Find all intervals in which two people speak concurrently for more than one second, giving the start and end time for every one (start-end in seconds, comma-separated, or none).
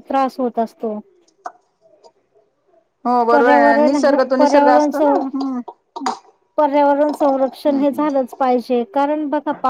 3.3-5.0